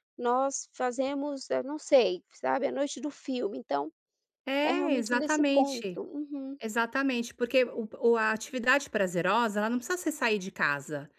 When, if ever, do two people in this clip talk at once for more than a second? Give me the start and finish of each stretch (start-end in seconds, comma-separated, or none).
4.7-6.0